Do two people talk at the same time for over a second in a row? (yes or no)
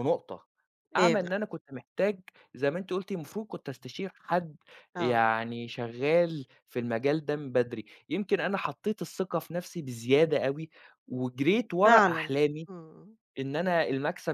no